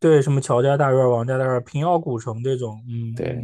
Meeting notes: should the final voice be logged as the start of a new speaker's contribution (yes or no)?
yes